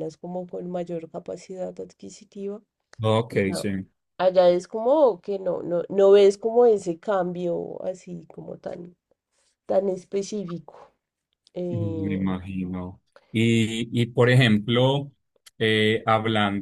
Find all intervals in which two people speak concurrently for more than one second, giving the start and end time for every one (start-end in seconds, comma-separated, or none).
none